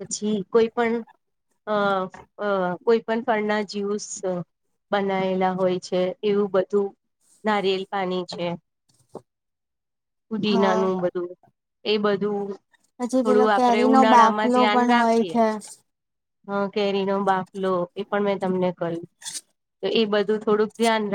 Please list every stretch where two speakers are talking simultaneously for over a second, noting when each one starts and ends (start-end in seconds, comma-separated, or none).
13.2-15.4